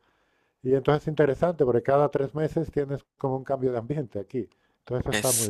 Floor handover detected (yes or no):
yes